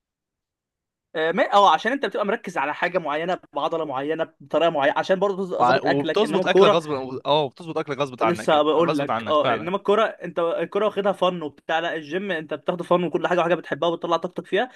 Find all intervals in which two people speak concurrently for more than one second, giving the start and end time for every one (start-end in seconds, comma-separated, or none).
5.6-6.8, 8.2-9.7